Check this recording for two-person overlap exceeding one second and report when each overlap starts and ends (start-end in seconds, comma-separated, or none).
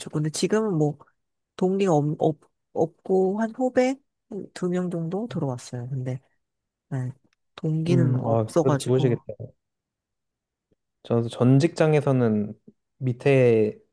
7.9-9.2